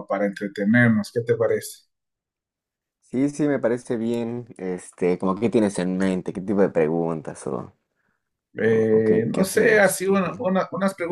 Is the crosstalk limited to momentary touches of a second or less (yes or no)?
no